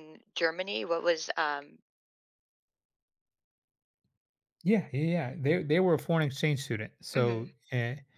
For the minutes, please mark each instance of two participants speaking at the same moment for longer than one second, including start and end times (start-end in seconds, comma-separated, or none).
none